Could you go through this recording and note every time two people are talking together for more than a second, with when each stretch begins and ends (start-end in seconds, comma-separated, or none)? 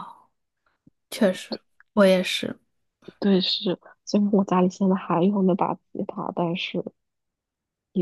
none